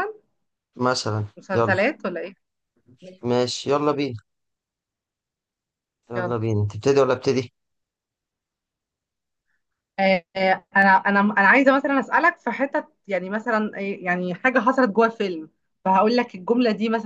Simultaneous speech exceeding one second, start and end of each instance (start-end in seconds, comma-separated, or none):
none